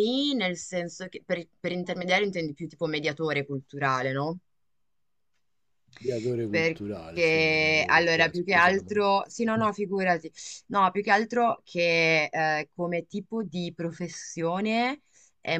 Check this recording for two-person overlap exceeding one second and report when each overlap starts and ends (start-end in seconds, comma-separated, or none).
6.5-8.8